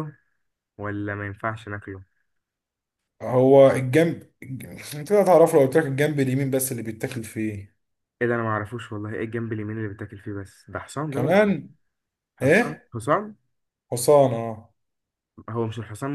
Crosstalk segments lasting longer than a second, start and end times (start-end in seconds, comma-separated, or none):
none